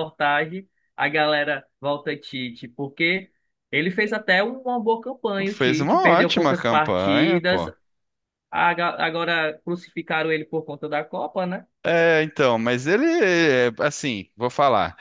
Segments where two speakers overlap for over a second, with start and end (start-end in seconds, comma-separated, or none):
5.5-7.7